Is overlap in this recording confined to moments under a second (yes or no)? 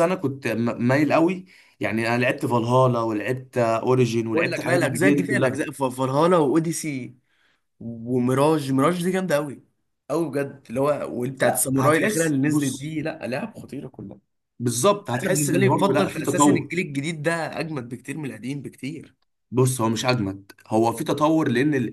no